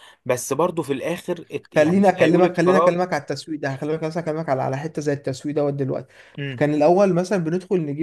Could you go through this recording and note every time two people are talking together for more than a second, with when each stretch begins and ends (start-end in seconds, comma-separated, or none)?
1.7-3.0